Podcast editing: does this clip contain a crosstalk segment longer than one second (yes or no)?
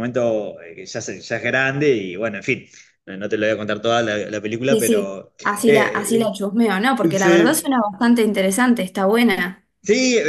yes